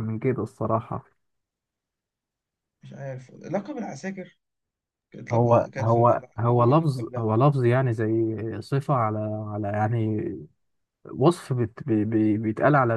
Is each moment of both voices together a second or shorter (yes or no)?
no